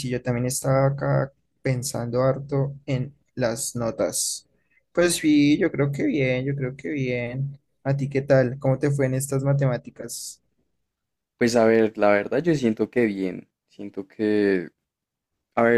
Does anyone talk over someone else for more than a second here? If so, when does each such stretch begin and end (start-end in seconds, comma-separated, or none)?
none